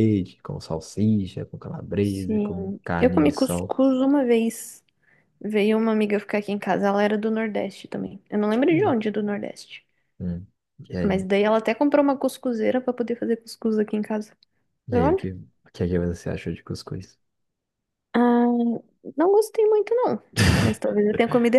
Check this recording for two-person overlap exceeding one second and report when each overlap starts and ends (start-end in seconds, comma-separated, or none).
2.0-3.8